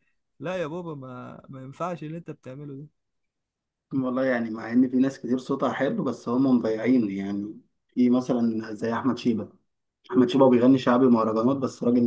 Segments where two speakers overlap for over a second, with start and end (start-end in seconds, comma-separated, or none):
none